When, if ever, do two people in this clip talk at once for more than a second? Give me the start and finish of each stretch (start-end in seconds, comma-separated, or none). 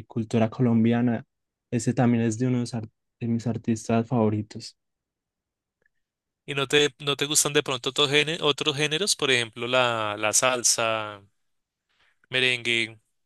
none